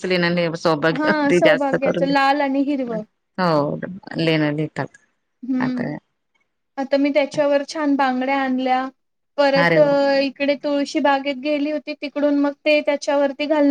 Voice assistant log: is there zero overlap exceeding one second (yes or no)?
no